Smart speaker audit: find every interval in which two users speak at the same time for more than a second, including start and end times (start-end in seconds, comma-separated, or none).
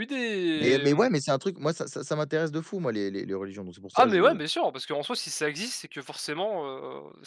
none